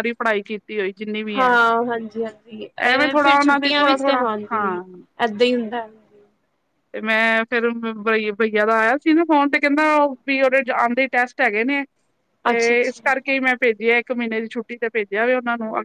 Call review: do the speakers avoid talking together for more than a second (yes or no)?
no